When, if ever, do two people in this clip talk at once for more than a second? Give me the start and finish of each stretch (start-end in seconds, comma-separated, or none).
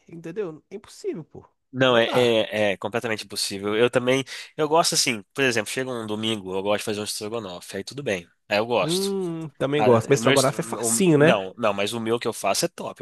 9.8-11.4